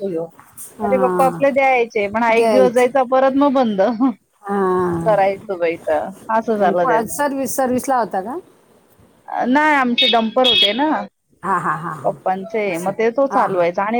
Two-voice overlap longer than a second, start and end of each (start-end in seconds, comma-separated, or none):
none